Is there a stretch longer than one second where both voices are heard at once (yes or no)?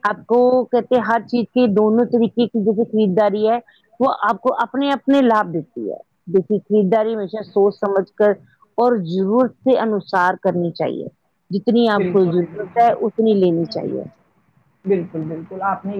yes